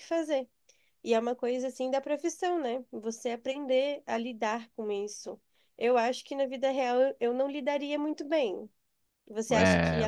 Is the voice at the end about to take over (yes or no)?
no